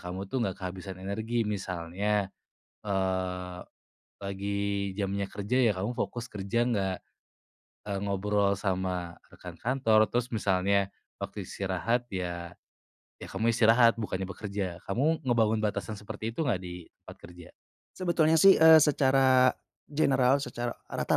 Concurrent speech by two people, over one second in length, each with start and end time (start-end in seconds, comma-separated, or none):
none